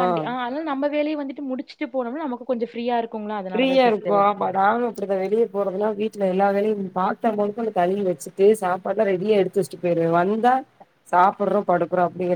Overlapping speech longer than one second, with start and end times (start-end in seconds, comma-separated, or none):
none